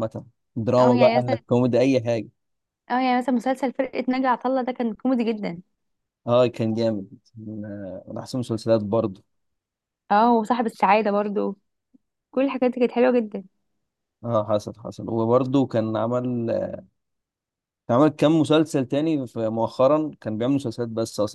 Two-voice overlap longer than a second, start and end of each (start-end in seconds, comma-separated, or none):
none